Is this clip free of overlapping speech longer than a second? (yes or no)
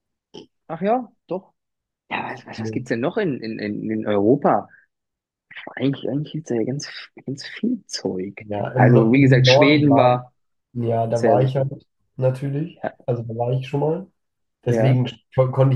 no